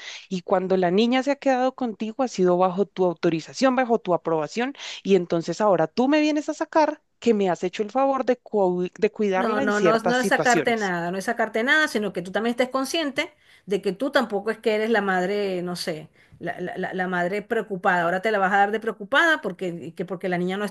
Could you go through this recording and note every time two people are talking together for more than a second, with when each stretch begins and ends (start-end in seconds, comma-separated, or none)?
9.3-10.9